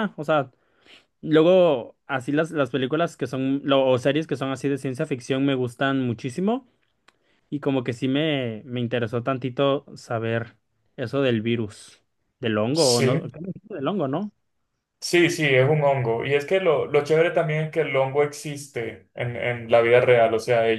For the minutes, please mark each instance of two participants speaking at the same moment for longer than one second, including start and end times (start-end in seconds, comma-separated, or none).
none